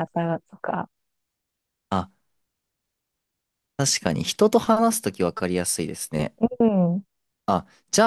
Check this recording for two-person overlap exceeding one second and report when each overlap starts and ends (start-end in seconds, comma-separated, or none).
none